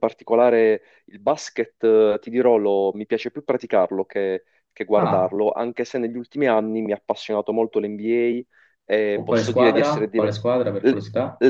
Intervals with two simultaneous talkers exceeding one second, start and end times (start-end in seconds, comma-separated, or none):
9.1-10.4